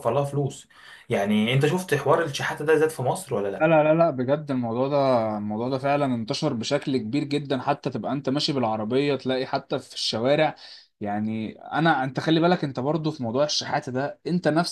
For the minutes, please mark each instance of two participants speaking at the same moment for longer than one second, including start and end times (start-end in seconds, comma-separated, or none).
none